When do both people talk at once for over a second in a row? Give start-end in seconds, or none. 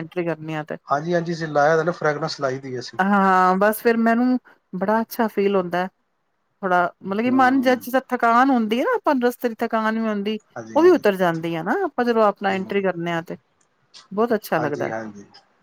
none